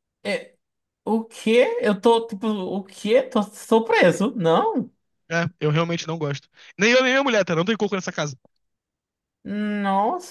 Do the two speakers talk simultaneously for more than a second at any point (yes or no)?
no